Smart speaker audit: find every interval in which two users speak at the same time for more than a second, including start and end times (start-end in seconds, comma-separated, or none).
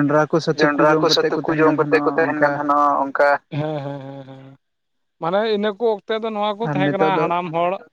0.6-2.6